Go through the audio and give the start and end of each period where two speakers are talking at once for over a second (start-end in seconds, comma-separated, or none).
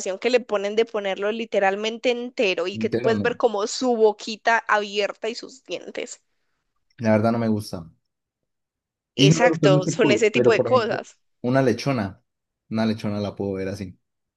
9.2-11.0